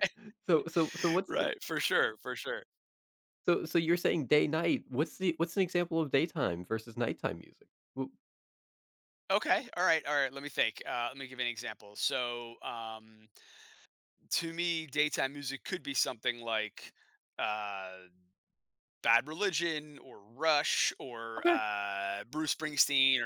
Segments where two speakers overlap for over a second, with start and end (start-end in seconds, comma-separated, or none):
none